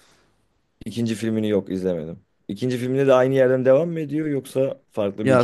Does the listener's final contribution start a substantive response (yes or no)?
yes